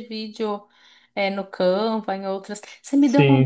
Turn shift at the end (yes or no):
no